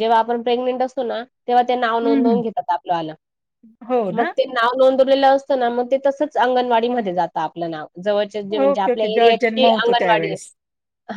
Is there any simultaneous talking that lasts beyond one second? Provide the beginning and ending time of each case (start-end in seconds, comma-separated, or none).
8.6-10.3